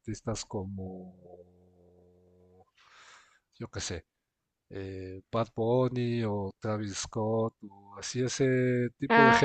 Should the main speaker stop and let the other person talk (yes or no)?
no